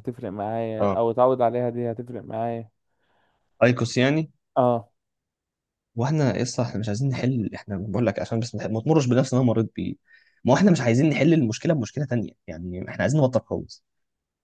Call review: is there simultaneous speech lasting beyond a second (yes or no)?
no